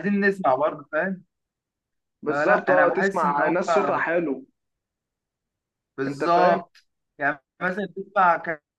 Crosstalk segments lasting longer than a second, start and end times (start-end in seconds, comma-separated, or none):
2.3-3.6